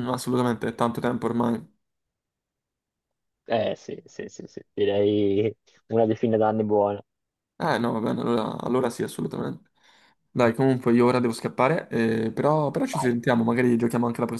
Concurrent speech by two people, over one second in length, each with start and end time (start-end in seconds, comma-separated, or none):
none